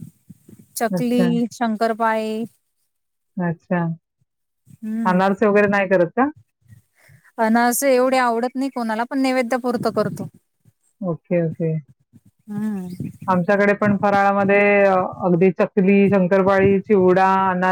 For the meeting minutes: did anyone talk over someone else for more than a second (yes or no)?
no